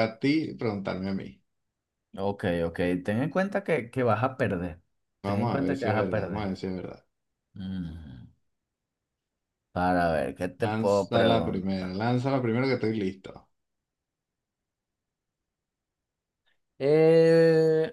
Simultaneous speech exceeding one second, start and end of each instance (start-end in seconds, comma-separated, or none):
5.2-6.5, 10.6-11.9